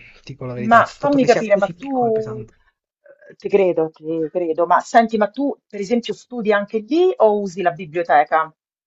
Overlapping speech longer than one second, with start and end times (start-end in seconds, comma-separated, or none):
0.6-2.4